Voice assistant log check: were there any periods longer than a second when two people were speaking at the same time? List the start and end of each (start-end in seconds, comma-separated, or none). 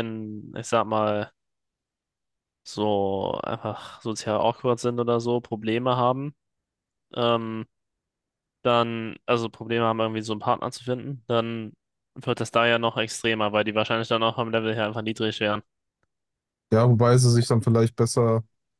none